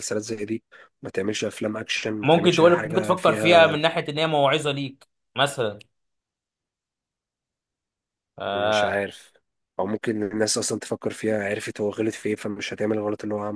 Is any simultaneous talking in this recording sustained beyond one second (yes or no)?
yes